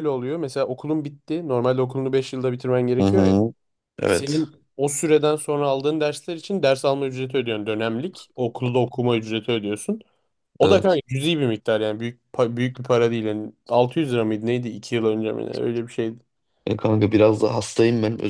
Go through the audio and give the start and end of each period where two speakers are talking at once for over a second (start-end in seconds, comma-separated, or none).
none